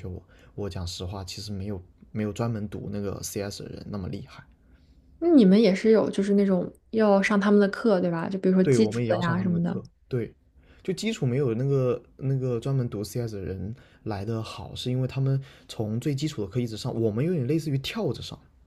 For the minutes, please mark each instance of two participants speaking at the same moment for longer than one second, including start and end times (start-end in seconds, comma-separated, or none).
8.6-9.8